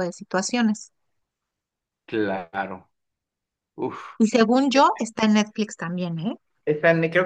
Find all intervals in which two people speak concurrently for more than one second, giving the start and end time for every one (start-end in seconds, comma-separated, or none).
none